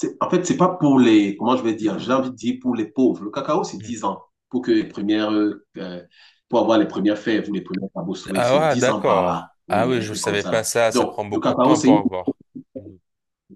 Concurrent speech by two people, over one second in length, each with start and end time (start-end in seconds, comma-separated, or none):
8.3-11.9